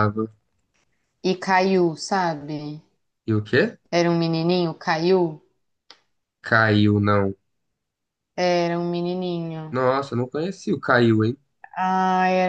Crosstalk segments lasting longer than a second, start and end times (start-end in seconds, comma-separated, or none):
none